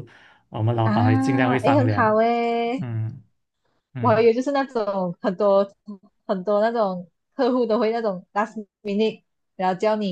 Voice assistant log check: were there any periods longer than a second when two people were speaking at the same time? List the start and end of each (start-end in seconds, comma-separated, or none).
0.8-2.2